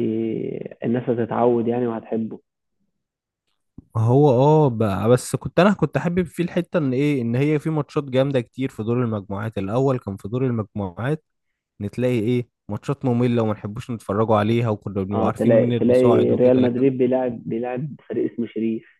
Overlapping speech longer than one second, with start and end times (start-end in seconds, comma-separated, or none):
15.1-16.9